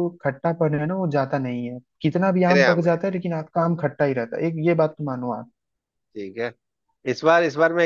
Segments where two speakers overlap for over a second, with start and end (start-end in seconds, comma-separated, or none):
none